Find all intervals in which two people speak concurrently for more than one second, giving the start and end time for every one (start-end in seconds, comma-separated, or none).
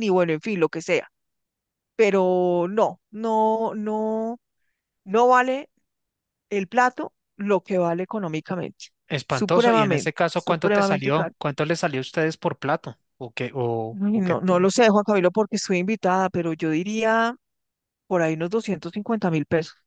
9.3-11.3